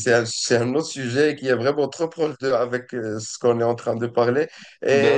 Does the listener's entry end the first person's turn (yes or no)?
no